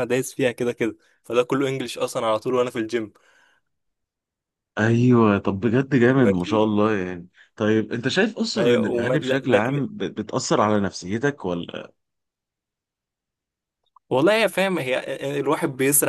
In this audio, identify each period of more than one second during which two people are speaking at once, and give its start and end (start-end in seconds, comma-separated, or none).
8.6-9.8